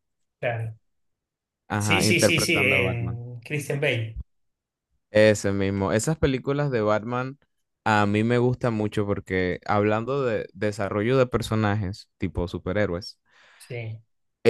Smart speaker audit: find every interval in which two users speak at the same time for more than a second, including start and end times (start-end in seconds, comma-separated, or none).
1.8-3.2